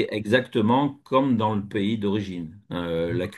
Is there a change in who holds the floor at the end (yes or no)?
no